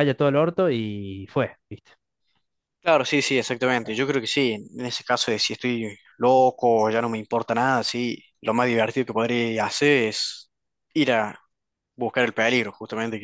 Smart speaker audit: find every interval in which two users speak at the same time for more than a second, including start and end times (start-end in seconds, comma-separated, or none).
none